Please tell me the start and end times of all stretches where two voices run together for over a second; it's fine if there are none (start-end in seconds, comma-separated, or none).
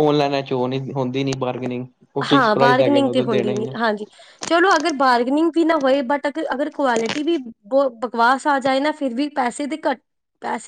2.3-3.7